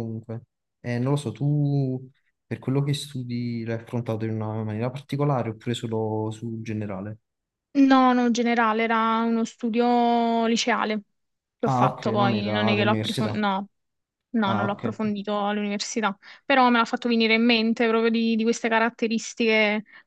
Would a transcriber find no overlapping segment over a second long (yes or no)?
no